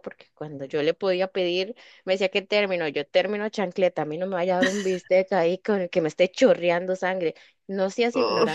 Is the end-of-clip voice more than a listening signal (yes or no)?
no